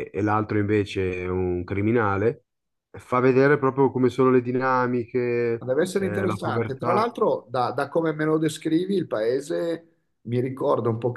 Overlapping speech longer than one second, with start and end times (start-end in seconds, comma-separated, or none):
5.6-7.0